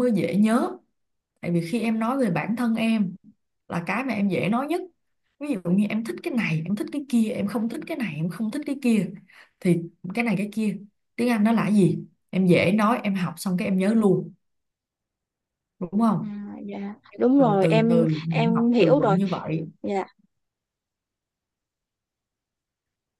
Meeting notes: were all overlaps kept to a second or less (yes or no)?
no